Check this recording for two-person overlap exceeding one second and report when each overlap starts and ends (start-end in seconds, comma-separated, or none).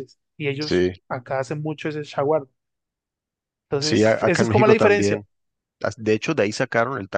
3.8-5.2